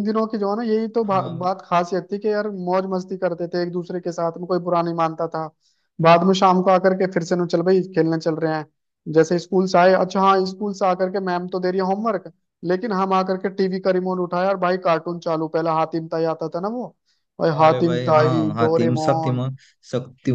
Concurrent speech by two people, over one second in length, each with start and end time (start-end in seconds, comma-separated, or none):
17.6-19.4